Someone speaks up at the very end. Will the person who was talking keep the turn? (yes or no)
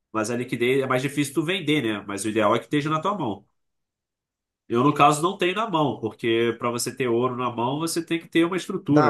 no